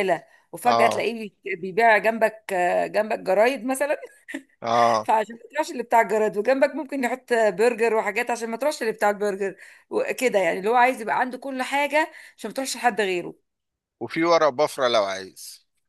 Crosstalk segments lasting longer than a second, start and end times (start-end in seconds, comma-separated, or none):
none